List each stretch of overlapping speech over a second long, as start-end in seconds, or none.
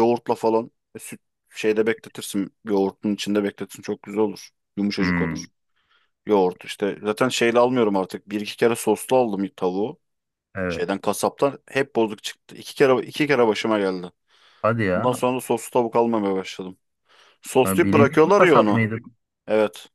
17.6-18.8